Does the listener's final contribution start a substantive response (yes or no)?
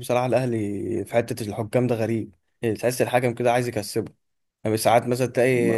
no